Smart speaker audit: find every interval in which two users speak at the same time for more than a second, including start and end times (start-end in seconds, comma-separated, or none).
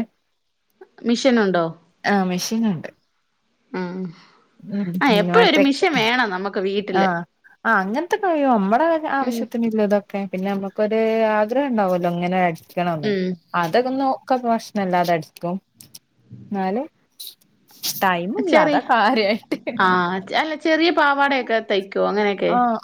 none